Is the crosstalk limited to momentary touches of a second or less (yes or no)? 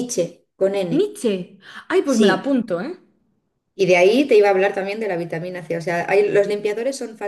yes